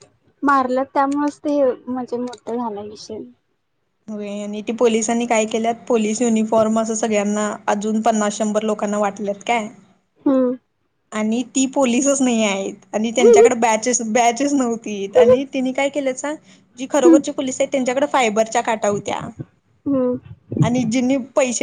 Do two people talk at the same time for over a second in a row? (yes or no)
no